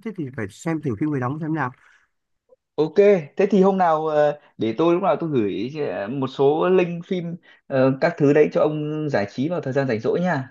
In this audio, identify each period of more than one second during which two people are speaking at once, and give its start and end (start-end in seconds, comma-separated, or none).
none